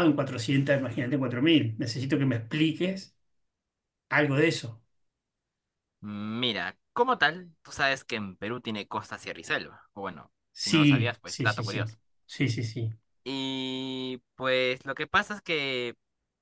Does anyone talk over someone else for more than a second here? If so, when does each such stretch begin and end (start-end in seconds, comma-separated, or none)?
10.5-11.9